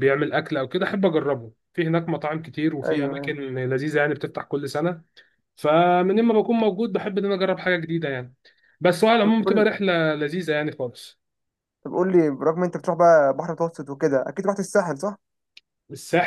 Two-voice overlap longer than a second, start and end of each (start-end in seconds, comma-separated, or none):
none